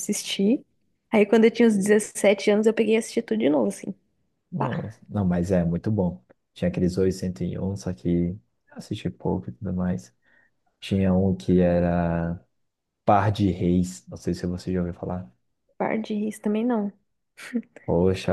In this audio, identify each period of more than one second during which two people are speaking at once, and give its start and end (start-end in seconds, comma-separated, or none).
none